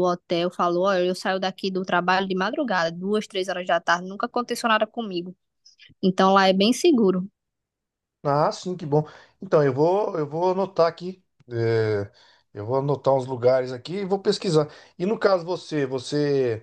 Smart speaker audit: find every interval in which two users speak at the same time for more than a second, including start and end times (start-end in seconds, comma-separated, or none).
none